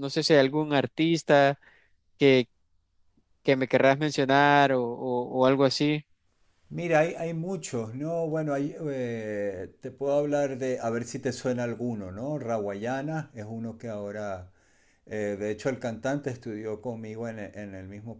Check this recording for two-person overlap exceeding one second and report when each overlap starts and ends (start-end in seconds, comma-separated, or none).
none